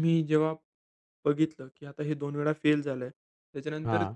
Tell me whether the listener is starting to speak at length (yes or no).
no